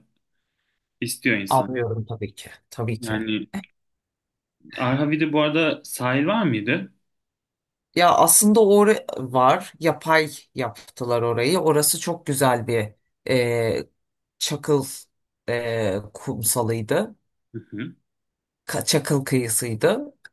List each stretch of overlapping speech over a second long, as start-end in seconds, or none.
none